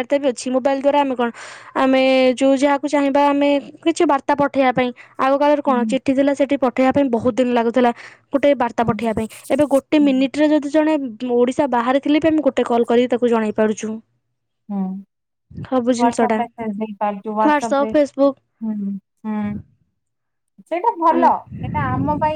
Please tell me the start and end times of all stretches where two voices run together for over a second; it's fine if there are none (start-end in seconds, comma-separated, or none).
none